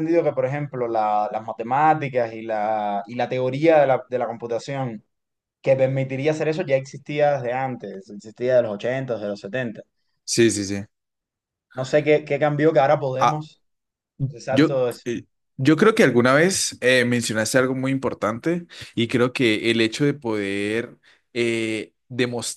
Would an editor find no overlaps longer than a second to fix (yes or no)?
yes